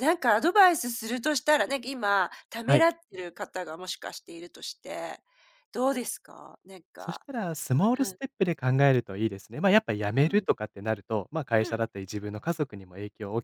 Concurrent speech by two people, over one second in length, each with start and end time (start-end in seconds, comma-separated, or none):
none